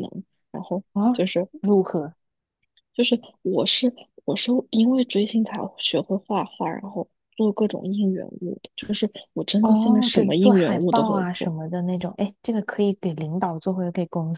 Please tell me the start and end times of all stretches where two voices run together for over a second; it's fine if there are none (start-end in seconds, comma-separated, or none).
9.6-11.5